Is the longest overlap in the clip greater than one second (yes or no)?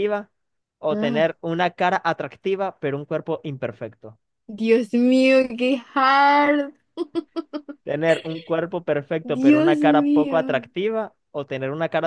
yes